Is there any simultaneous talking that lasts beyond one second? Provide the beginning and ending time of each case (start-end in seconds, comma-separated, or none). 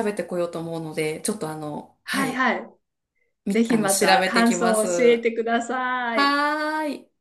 3.5-4.9